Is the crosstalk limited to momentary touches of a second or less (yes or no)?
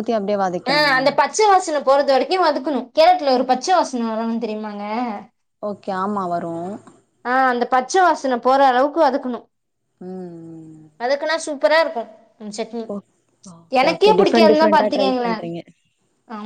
no